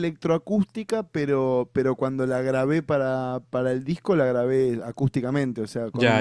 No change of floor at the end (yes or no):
no